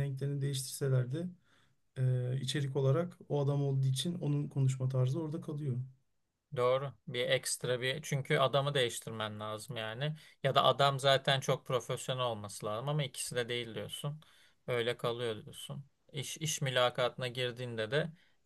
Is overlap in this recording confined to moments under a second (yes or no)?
yes